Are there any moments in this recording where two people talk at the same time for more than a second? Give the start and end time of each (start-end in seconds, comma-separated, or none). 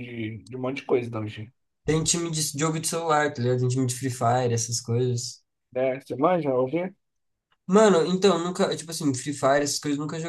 none